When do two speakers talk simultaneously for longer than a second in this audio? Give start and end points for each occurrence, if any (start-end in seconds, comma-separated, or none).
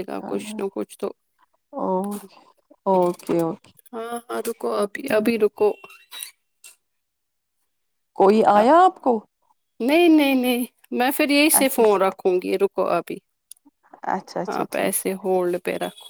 none